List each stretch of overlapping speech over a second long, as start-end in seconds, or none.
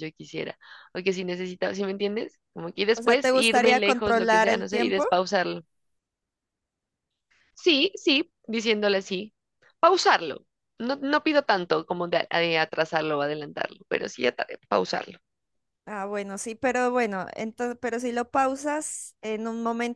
3.0-5.0